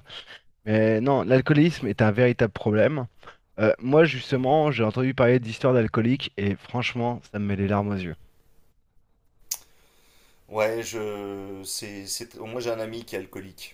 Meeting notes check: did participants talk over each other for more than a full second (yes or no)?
no